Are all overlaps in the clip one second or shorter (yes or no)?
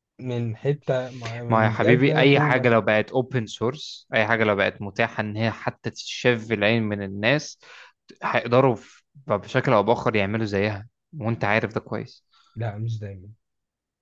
no